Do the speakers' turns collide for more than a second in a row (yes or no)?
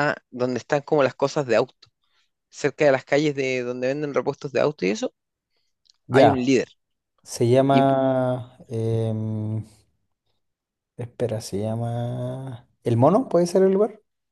no